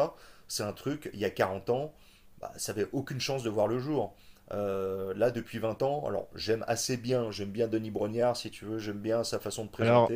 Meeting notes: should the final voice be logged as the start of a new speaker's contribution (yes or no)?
no